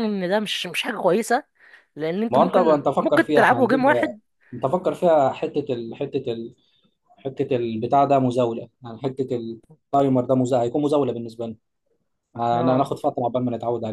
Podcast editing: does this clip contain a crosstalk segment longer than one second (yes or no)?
yes